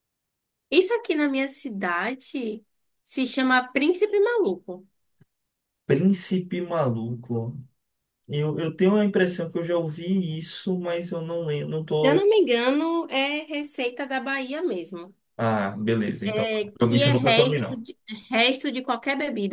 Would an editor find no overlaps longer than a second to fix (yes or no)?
no